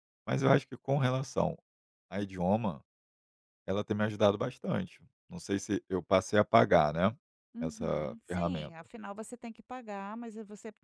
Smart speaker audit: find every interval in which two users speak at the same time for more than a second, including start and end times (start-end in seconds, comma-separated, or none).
7.6-8.9